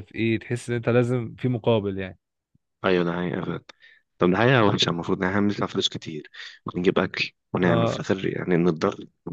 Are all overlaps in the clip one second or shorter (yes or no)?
yes